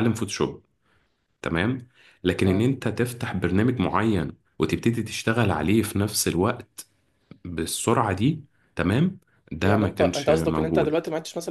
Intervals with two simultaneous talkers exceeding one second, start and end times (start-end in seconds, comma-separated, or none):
9.6-10.9